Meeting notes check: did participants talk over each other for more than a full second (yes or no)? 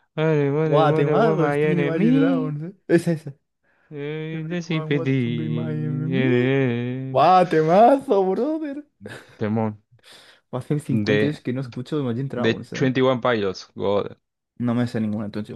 yes